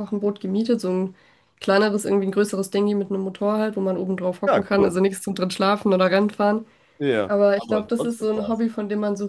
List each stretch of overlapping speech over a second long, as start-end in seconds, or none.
7.3-8.7